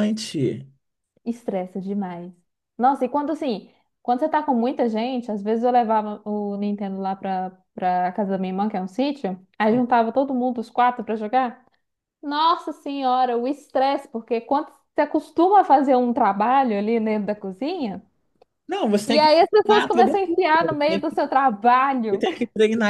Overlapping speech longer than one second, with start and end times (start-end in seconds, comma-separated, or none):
19.1-21.0